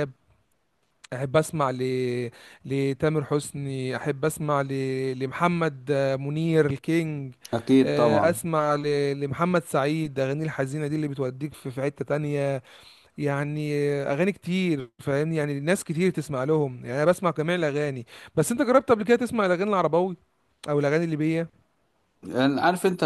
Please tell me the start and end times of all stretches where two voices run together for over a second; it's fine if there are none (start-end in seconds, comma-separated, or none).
none